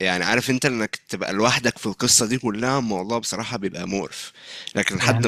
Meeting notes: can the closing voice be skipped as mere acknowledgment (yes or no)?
no